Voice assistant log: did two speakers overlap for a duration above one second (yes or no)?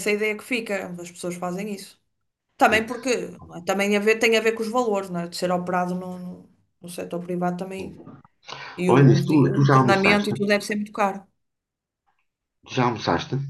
yes